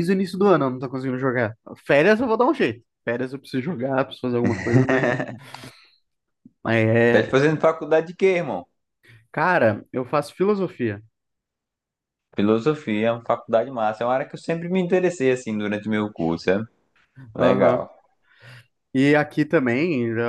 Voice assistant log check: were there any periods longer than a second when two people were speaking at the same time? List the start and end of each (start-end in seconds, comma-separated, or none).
none